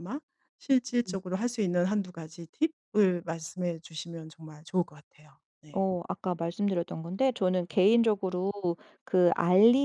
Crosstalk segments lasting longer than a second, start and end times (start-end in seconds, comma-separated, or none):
none